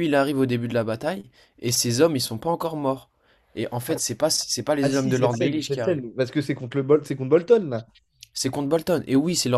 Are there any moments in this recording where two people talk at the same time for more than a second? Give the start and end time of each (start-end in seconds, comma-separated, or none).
4.8-6.0